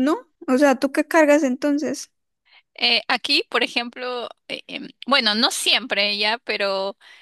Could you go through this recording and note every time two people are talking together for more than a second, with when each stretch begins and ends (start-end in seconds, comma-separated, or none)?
none